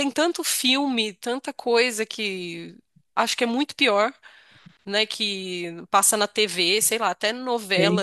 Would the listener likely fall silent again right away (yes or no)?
yes